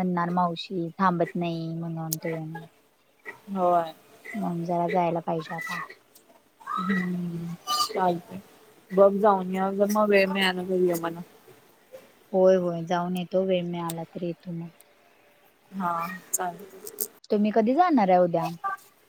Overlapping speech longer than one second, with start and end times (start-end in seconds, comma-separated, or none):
none